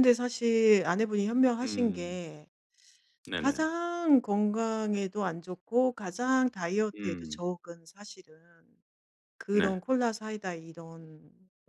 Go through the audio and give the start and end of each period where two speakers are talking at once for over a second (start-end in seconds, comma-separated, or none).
none